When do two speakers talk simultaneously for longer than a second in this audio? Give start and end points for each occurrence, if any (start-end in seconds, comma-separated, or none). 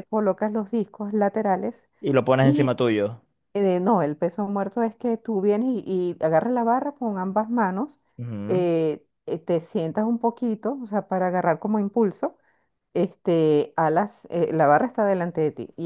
none